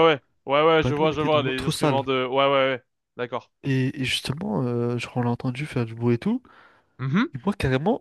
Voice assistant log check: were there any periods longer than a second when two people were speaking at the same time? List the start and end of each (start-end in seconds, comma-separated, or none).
0.8-2.0